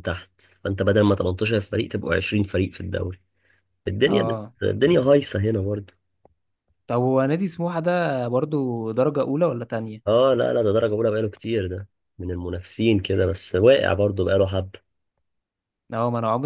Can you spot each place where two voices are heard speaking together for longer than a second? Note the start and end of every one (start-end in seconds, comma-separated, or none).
none